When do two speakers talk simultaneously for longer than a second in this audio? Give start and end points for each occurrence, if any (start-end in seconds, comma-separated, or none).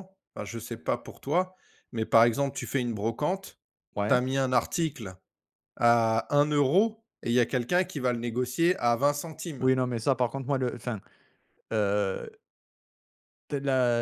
none